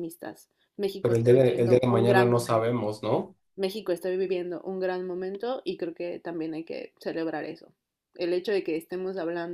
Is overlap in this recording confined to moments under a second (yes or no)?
no